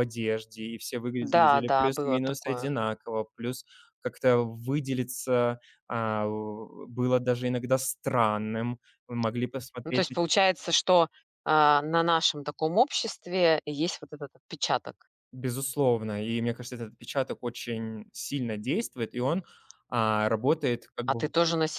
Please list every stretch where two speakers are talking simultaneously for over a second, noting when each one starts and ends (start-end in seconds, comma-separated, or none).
1.4-2.8